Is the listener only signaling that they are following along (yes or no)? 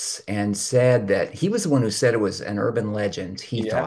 yes